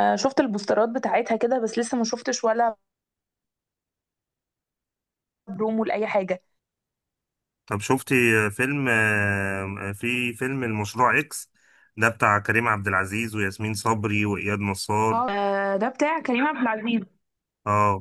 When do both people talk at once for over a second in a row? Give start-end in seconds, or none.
none